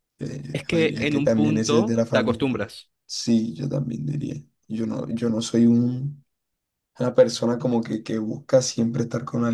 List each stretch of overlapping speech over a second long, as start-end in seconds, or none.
0.5-2.6